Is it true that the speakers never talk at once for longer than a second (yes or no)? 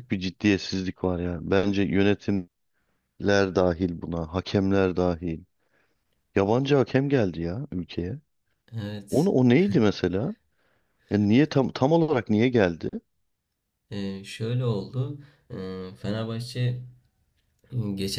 yes